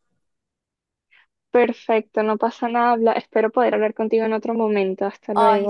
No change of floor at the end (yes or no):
no